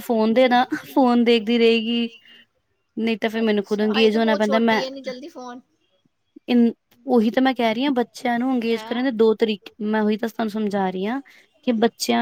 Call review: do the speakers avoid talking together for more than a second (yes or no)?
no